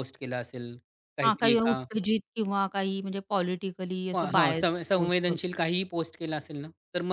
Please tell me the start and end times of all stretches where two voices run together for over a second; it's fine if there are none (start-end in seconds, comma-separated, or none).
4.1-5.5